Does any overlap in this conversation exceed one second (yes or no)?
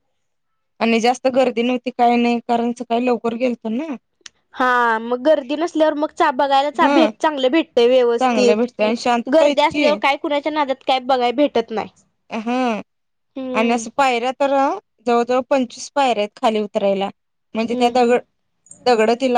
no